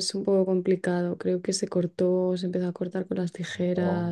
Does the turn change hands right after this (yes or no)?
no